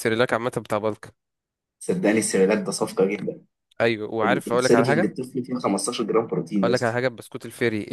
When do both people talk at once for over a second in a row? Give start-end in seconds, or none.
none